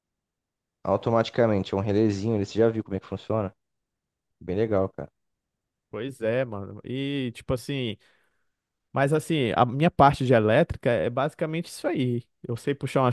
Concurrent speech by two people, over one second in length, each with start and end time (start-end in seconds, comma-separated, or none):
none